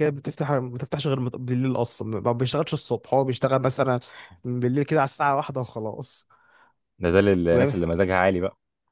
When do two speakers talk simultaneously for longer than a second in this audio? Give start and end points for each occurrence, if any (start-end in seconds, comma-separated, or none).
none